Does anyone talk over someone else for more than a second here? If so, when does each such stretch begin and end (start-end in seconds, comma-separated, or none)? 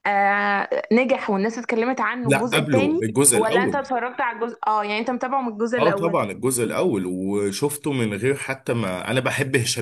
2.2-3.9